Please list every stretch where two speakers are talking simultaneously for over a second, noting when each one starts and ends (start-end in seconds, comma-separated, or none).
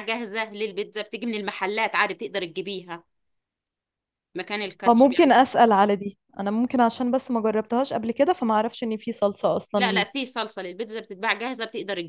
none